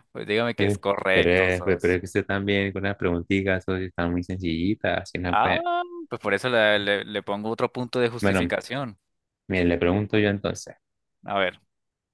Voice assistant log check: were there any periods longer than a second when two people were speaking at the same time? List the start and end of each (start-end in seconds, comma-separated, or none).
0.6-2.0